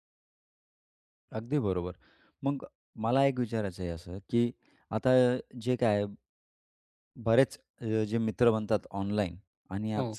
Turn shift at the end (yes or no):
no